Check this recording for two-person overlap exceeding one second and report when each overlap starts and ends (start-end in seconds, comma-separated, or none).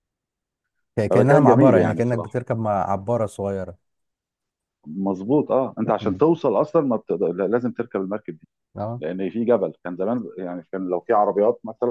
1.1-2.4